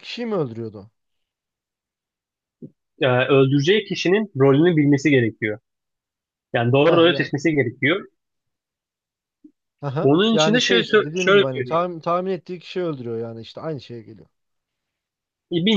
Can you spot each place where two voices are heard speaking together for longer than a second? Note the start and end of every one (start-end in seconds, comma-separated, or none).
10.0-11.8